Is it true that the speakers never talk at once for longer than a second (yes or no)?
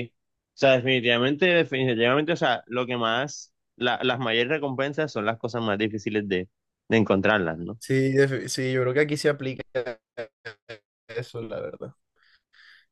yes